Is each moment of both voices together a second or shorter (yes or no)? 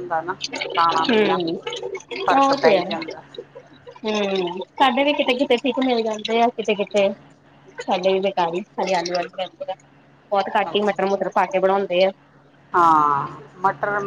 yes